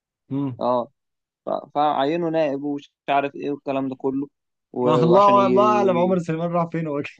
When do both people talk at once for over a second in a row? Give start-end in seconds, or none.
4.8-6.2